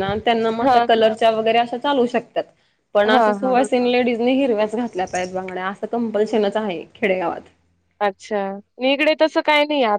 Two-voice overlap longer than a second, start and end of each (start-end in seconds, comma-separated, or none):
none